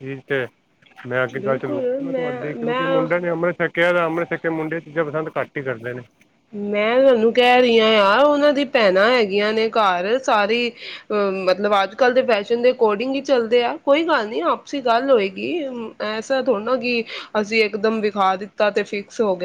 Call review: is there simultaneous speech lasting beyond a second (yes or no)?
yes